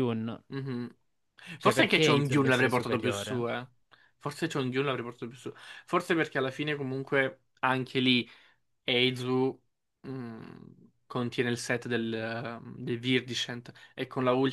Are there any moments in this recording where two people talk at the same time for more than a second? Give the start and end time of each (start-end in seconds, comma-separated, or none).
1.6-3.5